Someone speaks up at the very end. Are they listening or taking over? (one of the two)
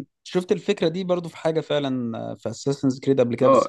taking over